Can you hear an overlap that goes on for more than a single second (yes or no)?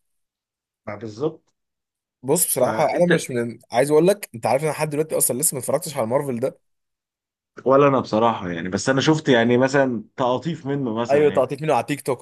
no